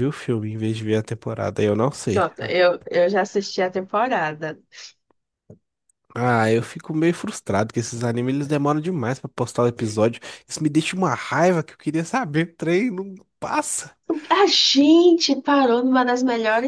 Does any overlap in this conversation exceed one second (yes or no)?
no